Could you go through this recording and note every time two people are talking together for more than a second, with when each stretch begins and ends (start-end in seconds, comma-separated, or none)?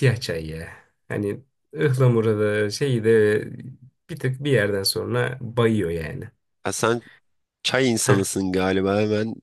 none